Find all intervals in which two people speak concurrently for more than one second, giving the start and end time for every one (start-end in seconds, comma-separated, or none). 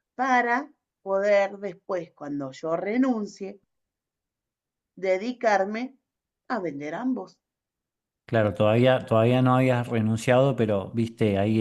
none